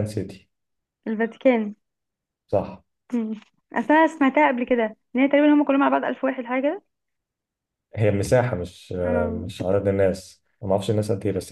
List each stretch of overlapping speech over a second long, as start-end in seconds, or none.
none